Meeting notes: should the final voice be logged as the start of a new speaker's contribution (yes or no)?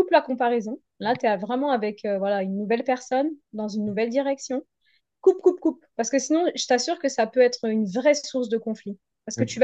no